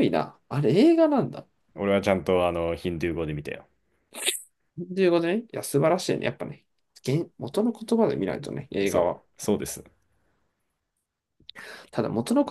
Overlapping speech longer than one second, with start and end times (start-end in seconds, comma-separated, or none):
none